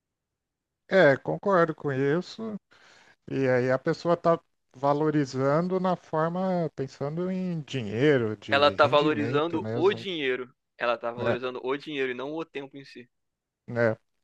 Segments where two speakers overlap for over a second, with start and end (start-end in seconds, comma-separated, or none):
8.5-10.0